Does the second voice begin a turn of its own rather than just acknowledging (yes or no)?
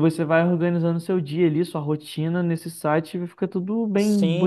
yes